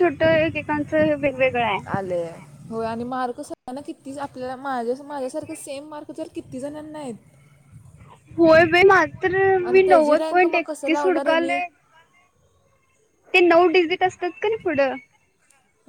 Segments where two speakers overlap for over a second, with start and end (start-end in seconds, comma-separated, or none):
9.7-11.6